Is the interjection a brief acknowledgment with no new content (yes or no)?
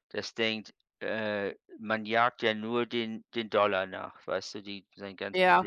no